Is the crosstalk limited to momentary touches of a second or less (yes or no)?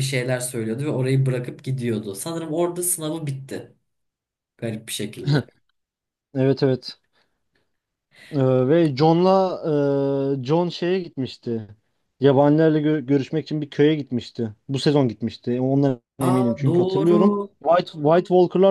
no